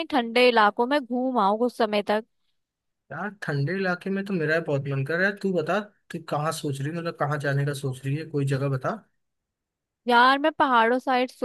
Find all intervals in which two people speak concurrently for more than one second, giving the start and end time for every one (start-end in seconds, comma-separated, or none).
none